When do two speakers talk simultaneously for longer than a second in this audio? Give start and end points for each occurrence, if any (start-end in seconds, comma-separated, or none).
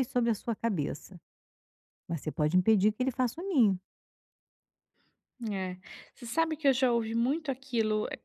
none